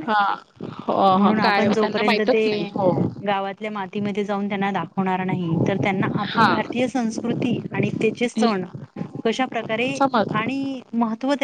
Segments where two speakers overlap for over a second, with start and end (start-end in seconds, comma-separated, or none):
1.2-2.7